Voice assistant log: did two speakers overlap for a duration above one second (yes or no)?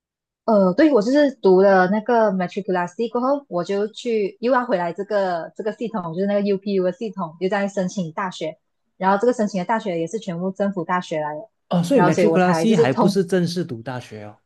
yes